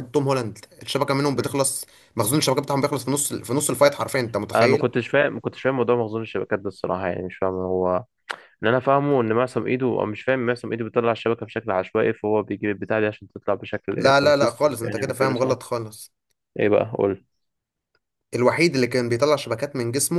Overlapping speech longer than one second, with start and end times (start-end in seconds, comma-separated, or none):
14.0-15.6